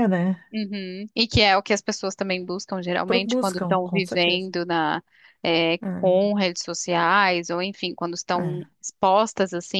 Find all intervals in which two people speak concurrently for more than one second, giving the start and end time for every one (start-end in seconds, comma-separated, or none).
3.0-4.5